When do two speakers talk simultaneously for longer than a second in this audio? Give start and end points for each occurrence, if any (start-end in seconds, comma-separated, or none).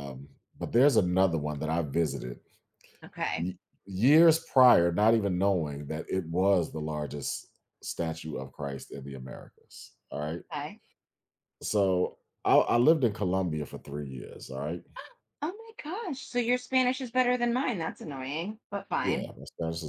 none